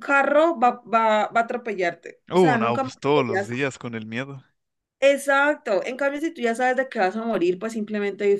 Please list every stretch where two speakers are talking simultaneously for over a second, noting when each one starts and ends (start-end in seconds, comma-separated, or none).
2.3-3.5